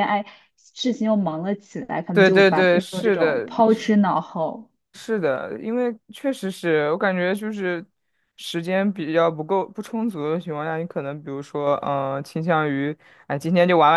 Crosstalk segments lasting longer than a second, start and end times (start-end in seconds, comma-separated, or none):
2.1-3.5